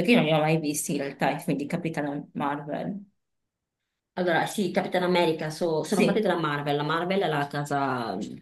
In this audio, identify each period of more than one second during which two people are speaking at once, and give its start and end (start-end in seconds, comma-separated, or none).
none